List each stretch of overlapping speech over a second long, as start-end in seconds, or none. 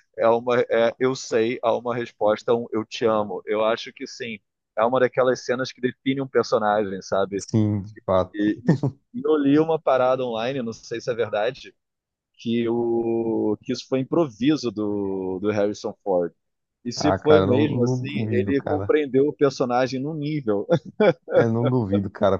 17.0-18.9